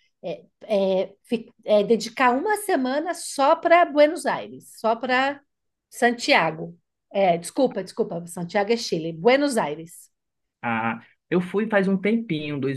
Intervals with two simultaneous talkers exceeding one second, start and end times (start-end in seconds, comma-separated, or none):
none